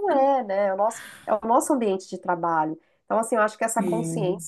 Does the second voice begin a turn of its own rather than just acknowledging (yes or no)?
no